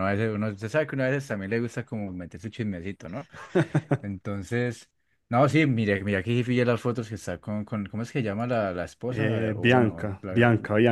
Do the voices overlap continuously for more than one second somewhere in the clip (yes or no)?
yes